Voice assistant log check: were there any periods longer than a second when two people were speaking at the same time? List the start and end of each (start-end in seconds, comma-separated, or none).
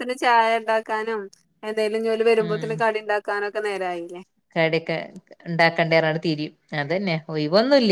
none